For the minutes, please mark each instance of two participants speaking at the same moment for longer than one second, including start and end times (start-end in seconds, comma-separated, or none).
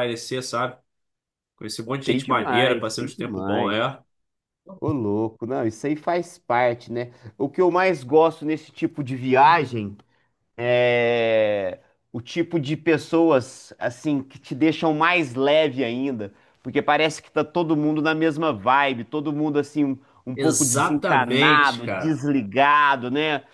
2.0-3.7, 20.3-22.2